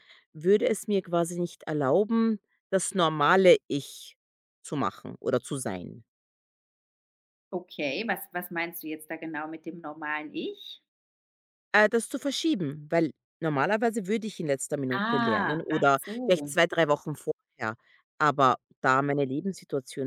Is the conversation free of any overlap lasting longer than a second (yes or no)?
no